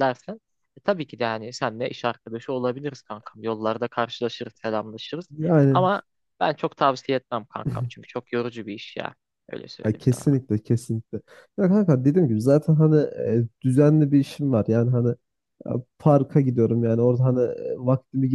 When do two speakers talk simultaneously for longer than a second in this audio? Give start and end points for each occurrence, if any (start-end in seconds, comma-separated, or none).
none